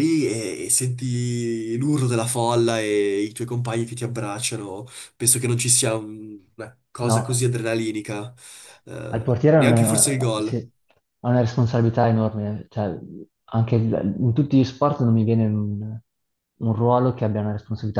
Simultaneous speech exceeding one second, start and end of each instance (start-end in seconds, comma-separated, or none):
9.1-10.6